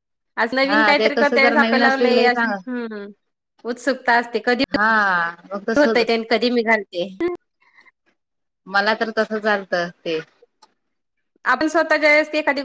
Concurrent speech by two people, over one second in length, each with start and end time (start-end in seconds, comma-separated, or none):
0.7-2.7